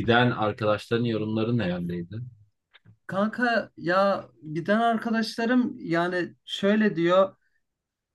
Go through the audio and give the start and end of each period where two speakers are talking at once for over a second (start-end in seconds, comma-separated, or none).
none